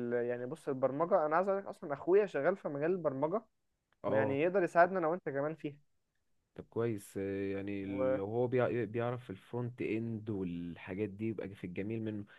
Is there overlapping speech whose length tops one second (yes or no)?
no